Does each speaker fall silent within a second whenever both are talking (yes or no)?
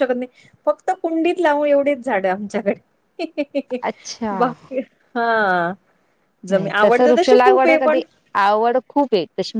no